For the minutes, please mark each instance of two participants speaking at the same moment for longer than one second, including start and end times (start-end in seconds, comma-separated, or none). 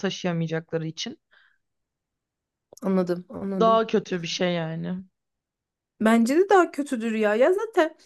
none